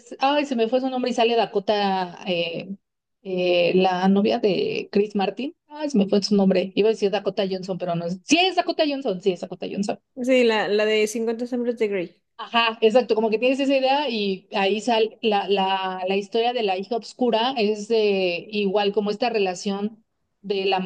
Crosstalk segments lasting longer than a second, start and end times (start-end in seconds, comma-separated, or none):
none